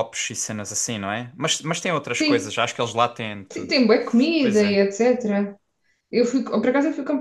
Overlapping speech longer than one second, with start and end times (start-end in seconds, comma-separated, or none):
none